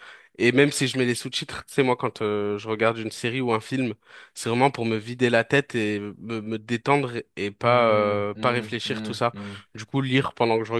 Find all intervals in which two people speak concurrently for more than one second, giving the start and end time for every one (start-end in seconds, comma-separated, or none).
7.6-9.3